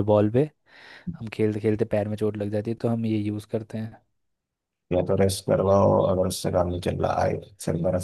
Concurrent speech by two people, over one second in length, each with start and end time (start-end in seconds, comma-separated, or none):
none